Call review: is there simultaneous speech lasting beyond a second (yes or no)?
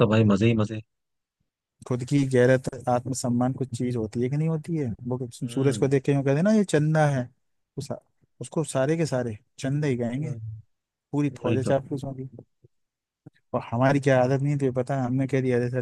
no